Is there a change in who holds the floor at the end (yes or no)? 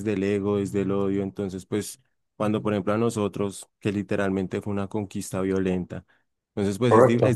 no